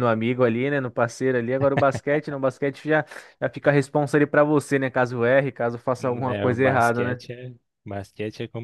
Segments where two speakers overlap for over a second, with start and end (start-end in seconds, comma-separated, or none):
6.0-7.2